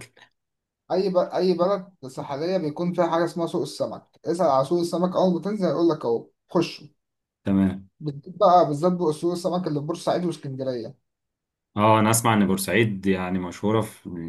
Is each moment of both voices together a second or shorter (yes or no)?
yes